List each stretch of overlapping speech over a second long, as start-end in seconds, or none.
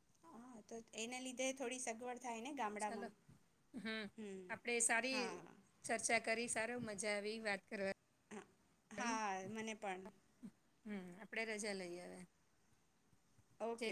none